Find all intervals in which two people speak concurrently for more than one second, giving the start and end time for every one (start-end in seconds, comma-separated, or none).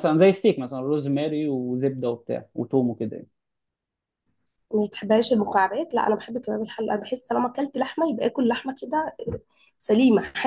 none